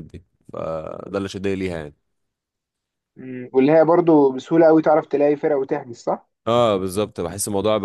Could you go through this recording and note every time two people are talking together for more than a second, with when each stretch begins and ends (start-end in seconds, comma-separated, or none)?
none